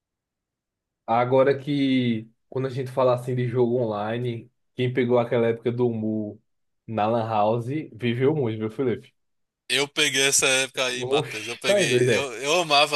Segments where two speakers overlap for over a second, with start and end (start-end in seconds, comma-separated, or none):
11.0-12.3